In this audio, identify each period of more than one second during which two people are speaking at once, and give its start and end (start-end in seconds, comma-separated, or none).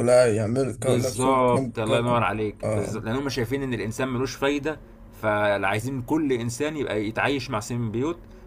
0.8-3.0